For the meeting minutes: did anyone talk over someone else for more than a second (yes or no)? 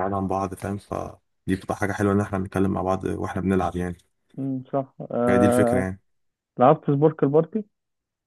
no